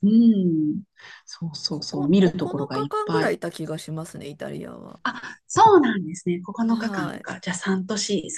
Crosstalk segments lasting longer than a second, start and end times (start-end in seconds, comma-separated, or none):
1.7-3.4